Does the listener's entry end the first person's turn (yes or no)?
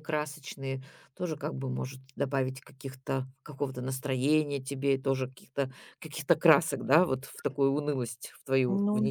yes